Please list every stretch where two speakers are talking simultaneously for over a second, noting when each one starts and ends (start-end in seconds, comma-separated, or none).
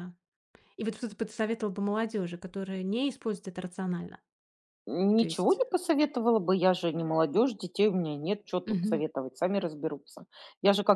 none